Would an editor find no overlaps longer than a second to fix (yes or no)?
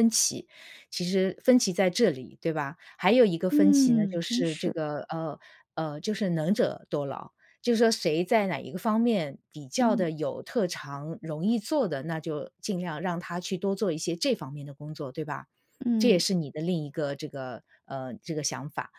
no